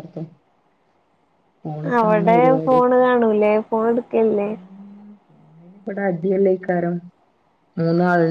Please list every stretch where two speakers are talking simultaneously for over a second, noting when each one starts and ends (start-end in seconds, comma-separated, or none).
none